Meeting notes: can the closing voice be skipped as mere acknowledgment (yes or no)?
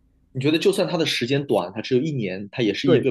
no